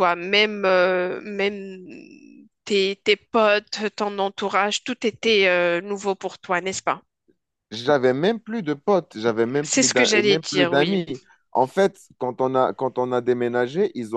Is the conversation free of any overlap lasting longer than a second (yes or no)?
no